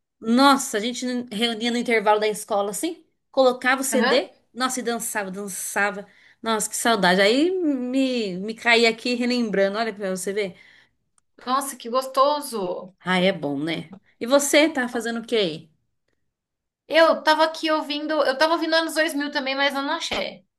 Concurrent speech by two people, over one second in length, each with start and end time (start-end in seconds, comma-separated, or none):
none